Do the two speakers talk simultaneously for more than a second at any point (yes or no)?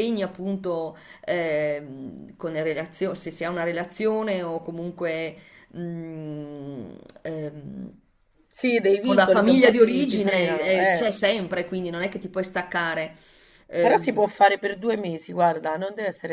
yes